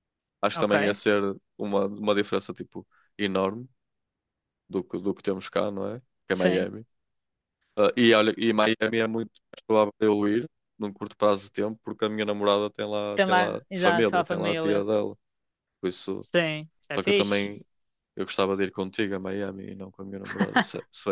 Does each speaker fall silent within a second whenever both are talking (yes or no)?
no